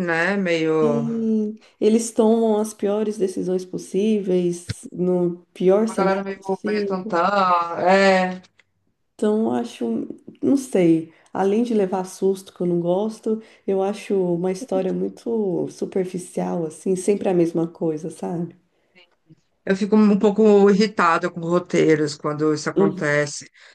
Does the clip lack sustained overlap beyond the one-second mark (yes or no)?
no